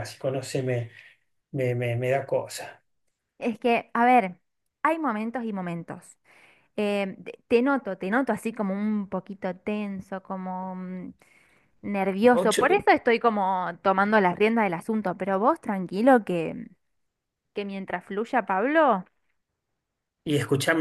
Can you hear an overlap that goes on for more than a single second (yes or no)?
no